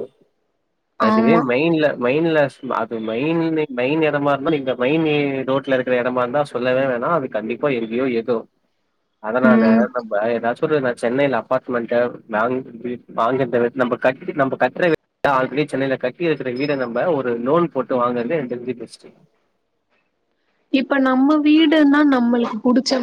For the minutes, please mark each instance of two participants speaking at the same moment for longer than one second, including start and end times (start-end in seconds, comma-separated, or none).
none